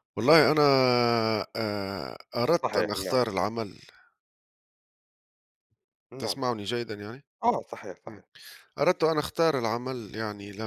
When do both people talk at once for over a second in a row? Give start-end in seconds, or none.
none